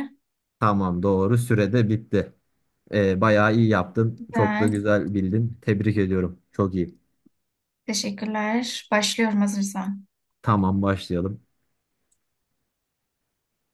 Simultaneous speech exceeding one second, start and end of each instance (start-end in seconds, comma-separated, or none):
none